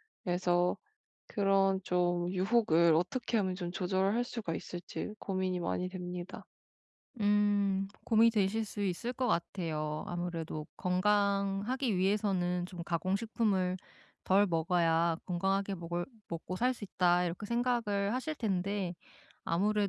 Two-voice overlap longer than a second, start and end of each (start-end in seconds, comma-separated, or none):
none